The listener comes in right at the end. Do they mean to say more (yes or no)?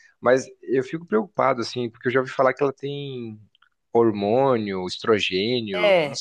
yes